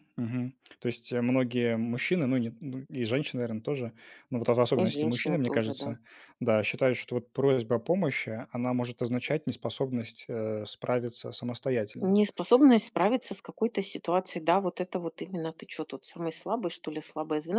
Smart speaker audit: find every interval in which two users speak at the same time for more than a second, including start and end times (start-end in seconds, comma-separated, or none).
4.8-6.0